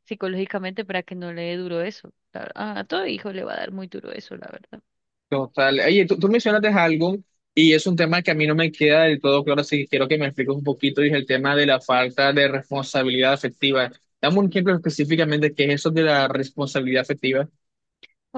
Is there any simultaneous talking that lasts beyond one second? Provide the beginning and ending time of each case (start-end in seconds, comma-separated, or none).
none